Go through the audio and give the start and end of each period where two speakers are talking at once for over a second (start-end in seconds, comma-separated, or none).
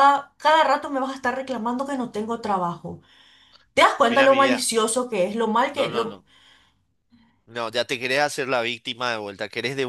none